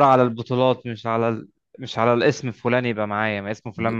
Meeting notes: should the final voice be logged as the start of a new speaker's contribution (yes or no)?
no